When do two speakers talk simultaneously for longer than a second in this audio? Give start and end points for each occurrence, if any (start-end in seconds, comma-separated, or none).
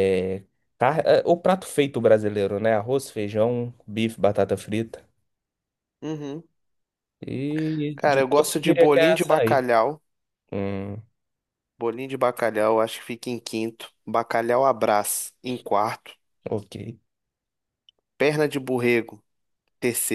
8.0-9.6